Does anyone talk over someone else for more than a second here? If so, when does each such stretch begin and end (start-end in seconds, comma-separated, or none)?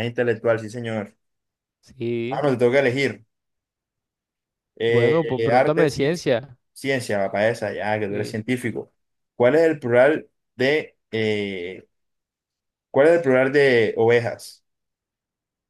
4.9-6.2